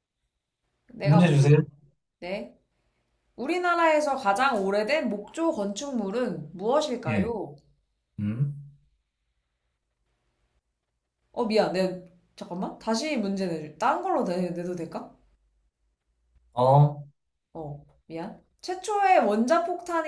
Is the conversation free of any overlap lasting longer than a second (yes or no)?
yes